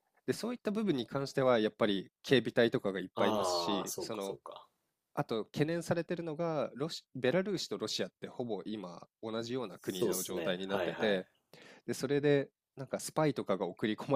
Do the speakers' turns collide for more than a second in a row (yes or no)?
yes